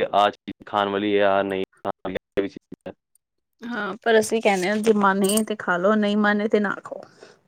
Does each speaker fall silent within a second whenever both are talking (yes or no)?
yes